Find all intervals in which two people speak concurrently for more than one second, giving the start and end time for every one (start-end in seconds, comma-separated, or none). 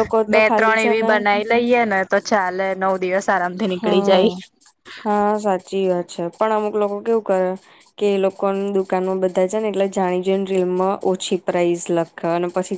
none